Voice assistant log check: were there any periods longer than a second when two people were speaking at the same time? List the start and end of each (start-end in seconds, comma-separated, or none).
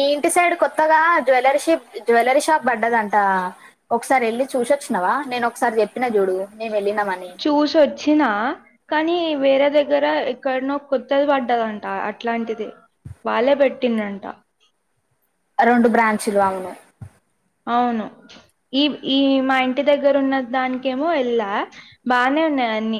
none